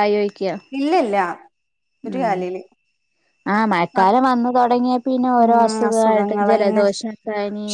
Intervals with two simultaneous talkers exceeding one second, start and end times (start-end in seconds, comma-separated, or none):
5.4-6.8